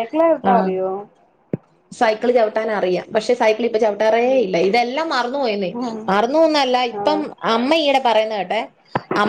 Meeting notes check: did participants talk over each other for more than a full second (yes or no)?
no